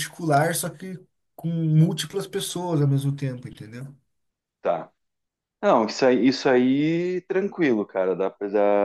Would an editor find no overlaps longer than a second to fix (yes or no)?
yes